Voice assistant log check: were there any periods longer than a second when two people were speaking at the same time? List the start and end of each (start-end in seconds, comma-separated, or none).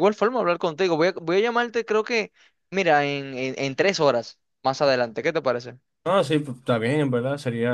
none